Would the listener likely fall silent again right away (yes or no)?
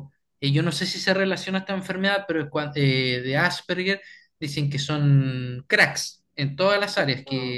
yes